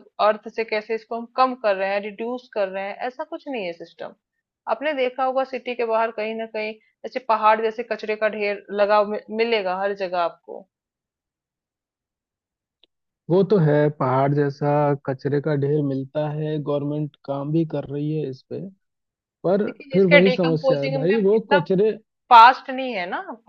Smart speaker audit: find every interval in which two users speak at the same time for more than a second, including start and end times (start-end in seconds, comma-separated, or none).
19.7-21.6